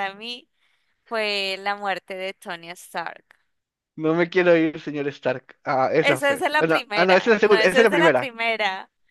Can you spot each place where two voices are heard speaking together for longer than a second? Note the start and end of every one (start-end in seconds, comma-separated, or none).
6.0-8.3